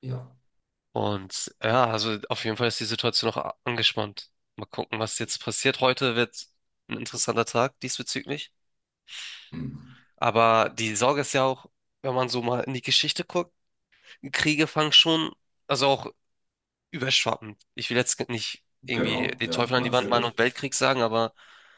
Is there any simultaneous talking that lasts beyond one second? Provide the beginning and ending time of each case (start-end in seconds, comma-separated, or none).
18.8-20.4